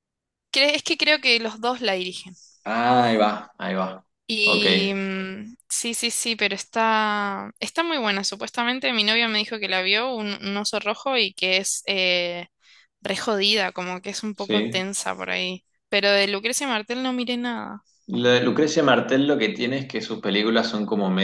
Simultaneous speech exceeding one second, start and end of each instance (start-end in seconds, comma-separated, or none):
none